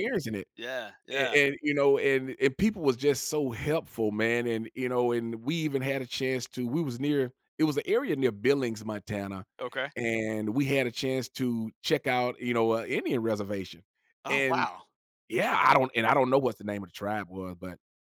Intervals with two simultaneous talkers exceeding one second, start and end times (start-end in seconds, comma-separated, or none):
none